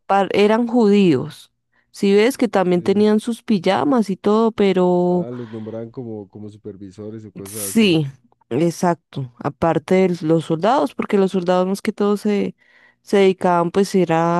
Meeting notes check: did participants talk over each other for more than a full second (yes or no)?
no